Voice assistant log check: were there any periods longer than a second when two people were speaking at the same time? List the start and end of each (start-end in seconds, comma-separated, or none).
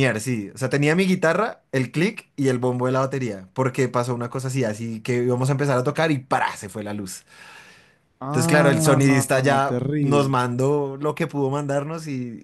8.3-10.3